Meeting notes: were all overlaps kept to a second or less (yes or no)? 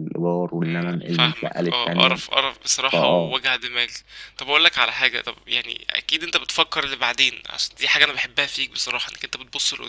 no